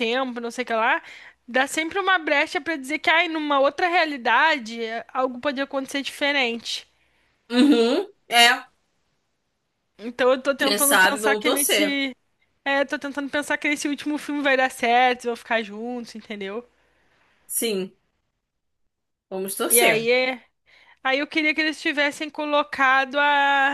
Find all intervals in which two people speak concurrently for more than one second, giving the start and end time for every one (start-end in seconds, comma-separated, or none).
10.6-12.0